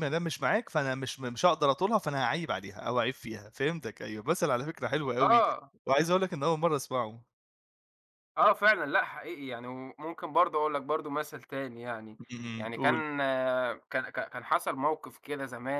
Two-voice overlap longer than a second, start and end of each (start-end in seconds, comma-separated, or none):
none